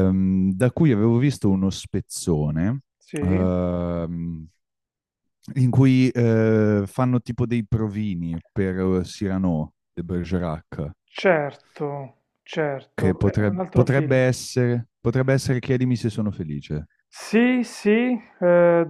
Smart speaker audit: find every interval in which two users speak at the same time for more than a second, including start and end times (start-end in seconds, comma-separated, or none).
12.9-14.2